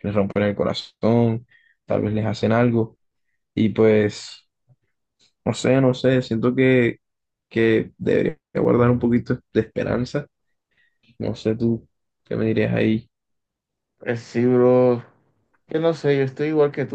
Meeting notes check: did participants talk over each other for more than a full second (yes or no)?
no